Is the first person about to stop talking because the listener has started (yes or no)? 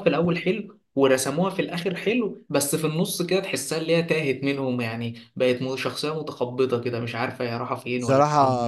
yes